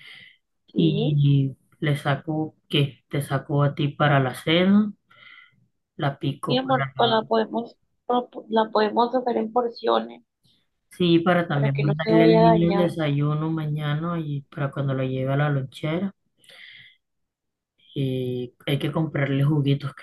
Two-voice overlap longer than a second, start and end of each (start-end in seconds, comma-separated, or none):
11.5-12.9